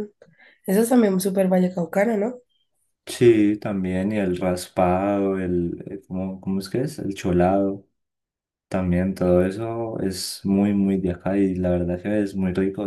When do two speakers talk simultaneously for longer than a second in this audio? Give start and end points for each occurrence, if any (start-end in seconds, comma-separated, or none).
none